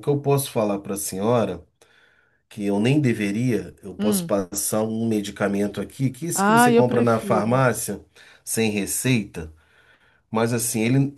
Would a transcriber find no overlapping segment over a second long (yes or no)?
no